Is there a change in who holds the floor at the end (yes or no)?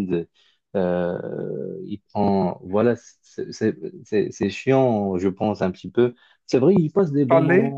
no